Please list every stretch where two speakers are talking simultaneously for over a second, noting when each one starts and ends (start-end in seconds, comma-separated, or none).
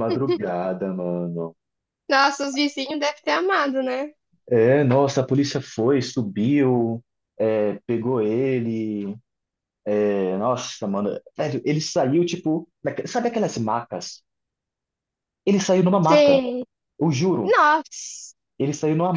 none